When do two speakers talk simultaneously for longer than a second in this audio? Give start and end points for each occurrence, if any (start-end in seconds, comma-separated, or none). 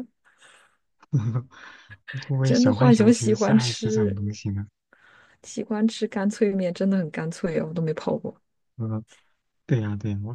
2.4-4.2